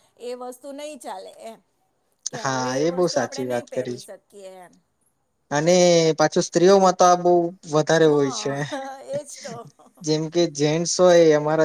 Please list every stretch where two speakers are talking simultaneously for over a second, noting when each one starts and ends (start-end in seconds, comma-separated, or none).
2.4-4.0